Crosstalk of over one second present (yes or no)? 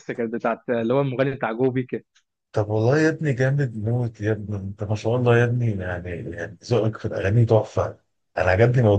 no